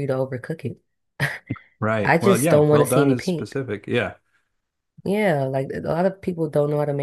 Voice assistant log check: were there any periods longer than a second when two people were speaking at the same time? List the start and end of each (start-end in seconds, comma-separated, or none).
2.0-3.6